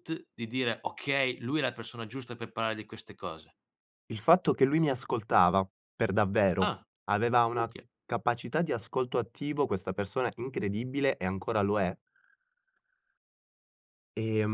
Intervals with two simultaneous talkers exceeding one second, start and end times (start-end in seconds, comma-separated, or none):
none